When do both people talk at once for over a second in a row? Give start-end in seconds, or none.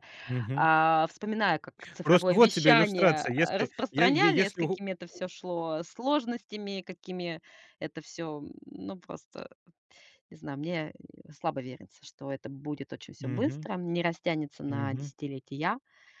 2.0-4.8